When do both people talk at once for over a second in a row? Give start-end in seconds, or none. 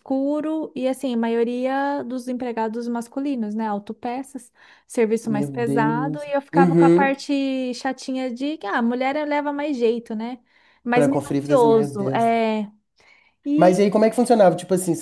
5.2-7.1, 10.9-12.3